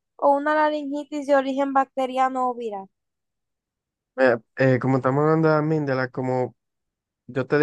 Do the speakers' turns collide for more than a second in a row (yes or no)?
no